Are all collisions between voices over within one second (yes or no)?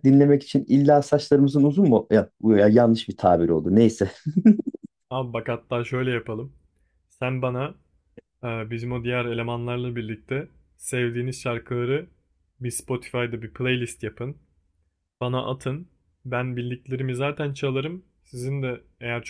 yes